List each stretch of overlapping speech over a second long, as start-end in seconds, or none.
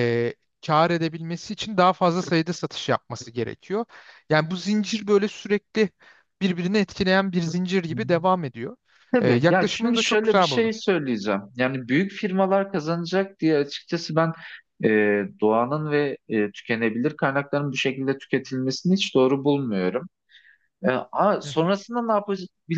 9.2-10.7